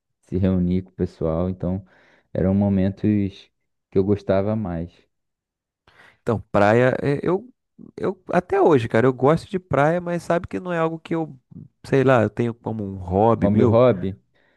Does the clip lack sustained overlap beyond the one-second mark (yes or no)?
yes